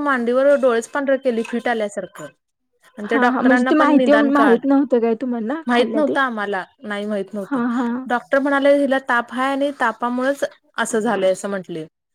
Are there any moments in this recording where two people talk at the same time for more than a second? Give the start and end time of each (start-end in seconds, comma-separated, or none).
3.1-4.7